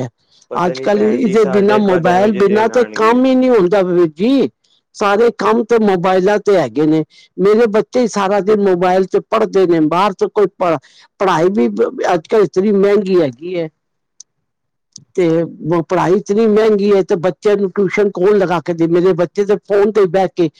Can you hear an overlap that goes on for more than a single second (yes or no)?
yes